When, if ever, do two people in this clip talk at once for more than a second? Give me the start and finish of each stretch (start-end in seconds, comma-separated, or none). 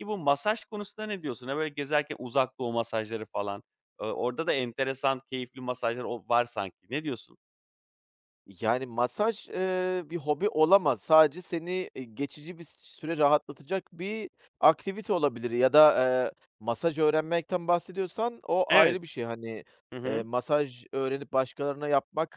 none